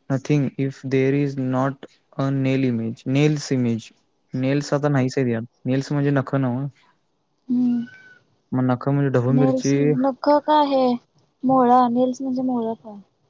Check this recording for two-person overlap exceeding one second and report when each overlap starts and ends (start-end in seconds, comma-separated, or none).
none